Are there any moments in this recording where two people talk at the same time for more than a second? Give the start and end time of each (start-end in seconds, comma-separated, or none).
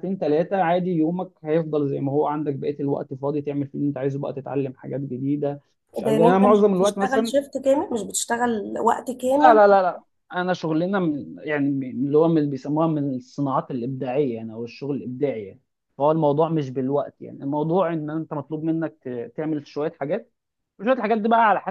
6.0-7.4